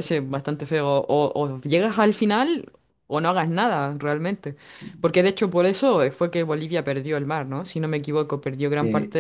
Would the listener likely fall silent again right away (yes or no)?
yes